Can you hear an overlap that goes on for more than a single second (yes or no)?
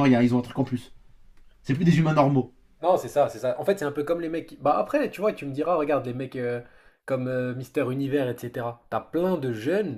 no